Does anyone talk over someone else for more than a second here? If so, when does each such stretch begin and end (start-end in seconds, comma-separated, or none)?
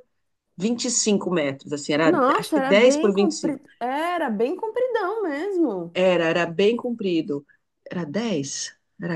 2.0-3.6